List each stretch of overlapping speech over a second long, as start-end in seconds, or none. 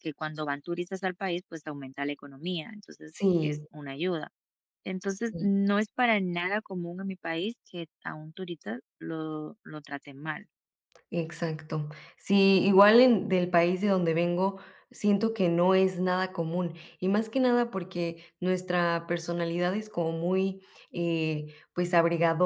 none